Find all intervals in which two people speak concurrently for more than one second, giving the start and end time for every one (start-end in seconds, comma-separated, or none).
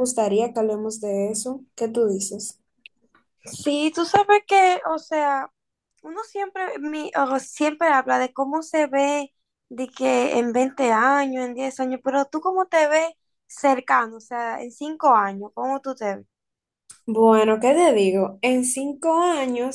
none